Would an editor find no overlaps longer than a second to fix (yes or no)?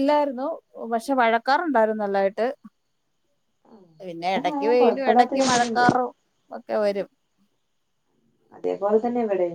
no